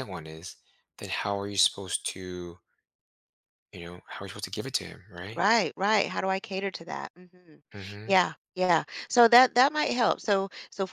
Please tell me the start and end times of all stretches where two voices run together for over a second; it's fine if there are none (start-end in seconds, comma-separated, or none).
none